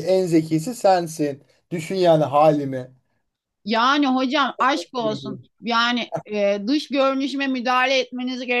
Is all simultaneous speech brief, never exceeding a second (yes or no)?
yes